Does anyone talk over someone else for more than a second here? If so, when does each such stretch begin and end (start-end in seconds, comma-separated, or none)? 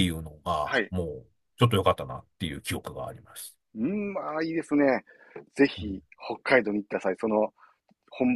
none